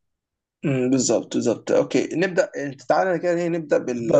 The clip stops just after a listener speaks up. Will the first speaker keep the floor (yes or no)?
yes